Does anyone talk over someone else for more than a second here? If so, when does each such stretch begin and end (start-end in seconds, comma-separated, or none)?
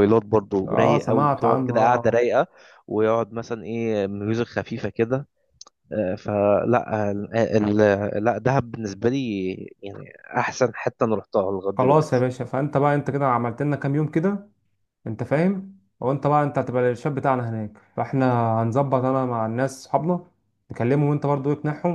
0.7-2.2